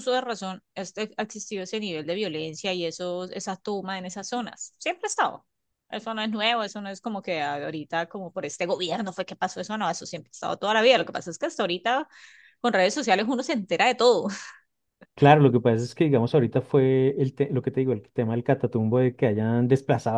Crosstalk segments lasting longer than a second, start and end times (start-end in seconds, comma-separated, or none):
none